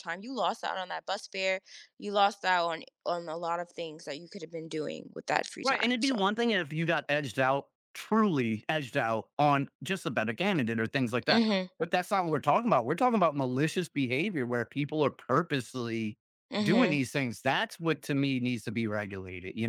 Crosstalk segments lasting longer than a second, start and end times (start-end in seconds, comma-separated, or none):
none